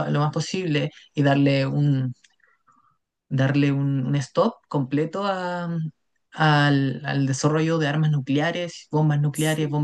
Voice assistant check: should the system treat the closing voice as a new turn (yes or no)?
no